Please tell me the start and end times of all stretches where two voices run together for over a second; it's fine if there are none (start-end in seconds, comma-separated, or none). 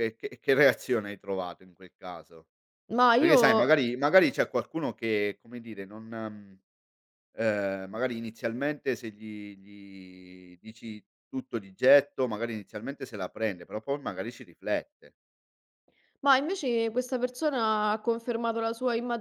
none